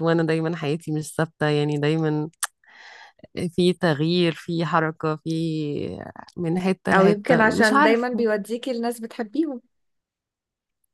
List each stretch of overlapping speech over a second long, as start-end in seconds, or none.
6.9-8.3